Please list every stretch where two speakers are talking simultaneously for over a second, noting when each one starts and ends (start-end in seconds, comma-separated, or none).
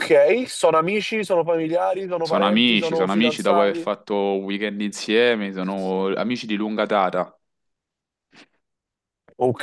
2.2-3.9